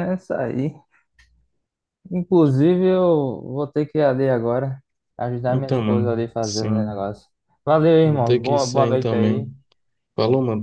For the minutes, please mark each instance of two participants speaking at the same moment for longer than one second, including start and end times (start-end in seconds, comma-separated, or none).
5.5-7.1, 8.0-9.5